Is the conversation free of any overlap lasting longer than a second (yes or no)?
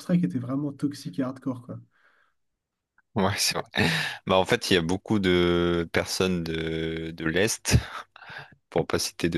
yes